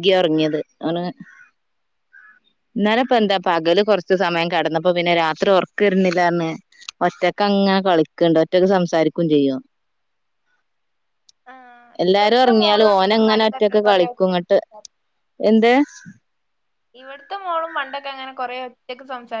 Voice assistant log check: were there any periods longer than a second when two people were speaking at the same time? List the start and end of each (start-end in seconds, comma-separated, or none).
12.0-14.1